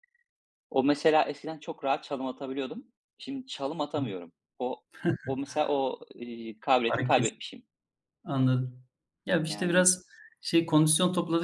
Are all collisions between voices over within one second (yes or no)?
yes